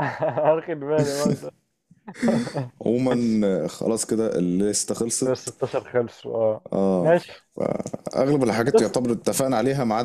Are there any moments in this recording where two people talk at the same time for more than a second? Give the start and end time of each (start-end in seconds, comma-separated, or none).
none